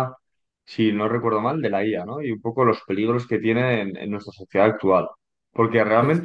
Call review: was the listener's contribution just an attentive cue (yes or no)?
yes